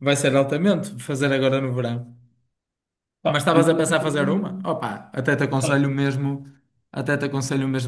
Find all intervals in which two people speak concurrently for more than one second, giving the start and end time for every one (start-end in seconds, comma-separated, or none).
3.3-4.7